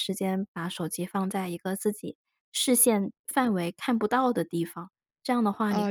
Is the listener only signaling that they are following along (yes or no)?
no